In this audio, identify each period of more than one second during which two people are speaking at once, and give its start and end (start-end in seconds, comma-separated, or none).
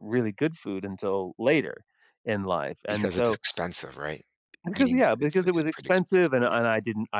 4.8-6.6